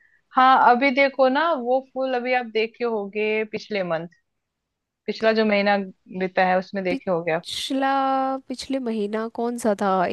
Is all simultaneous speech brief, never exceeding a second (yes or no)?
yes